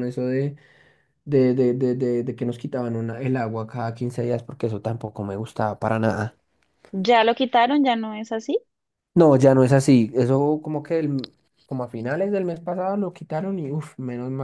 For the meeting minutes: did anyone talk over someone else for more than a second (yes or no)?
no